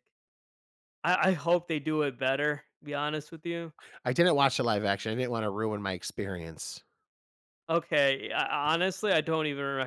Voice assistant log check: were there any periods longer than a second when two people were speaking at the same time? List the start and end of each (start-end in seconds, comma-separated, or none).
none